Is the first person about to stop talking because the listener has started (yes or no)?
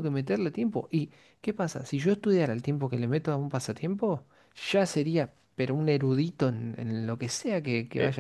yes